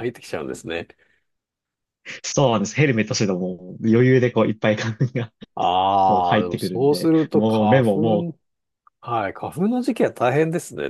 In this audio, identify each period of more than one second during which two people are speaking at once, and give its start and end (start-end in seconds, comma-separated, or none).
6.1-8.3